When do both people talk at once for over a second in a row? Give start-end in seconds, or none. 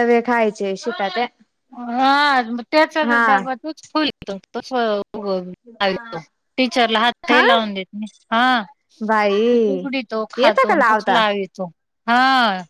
none